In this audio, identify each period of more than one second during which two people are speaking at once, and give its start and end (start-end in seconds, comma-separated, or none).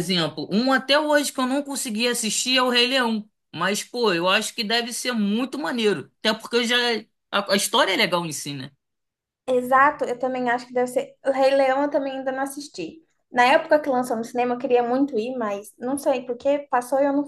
none